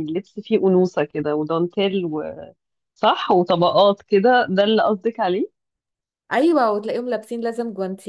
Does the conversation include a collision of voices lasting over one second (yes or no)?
no